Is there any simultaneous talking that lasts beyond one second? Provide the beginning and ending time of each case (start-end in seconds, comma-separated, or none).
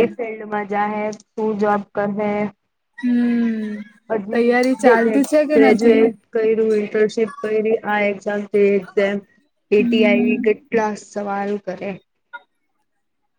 4.3-6.0